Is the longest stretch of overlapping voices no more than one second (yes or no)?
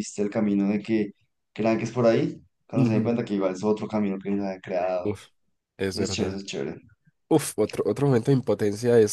yes